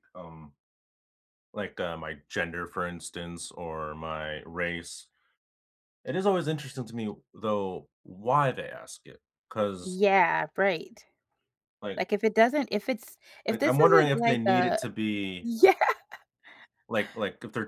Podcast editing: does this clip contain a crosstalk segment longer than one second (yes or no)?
yes